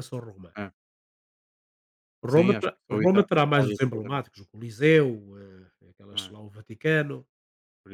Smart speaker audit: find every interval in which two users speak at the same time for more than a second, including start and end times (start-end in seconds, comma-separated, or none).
2.3-4.3